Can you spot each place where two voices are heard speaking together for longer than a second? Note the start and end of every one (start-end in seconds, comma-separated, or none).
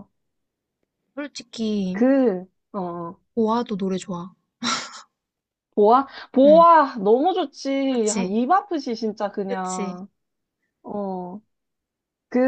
none